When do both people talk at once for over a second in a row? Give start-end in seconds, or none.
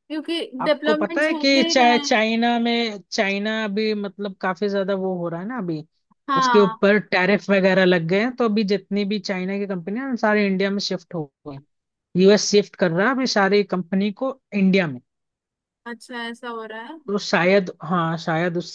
0.6-2.2